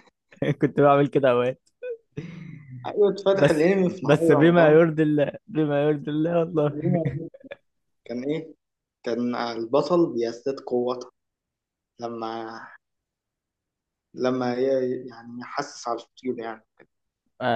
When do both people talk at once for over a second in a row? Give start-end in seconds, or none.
3.3-4.8